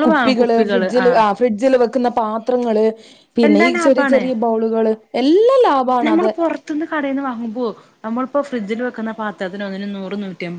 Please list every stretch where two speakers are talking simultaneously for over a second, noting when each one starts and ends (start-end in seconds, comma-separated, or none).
none